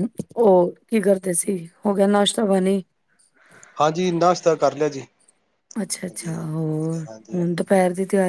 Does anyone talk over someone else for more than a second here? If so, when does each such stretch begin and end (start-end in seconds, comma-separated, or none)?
5.9-7.5